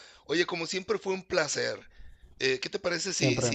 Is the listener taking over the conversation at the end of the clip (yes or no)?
no